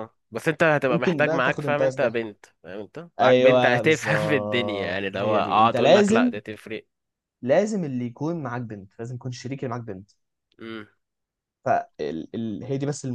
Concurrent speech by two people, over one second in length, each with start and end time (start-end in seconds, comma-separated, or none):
0.9-2.2, 3.2-6.3